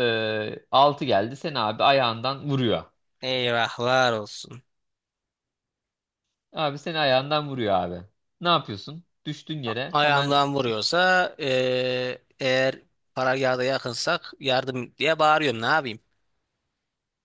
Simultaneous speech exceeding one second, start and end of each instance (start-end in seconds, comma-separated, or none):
none